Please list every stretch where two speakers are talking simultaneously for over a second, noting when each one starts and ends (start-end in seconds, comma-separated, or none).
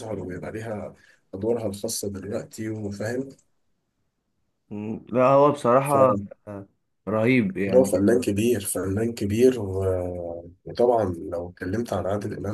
none